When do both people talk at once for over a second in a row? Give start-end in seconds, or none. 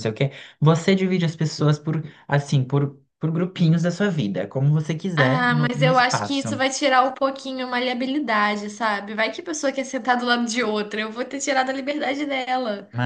5.2-6.6